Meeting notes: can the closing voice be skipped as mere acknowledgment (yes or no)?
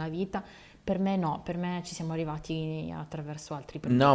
no